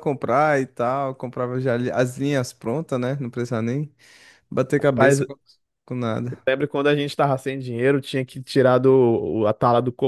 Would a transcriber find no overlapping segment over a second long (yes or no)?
yes